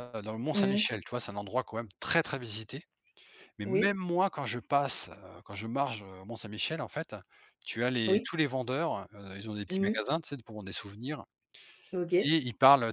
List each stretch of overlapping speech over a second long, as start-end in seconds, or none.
none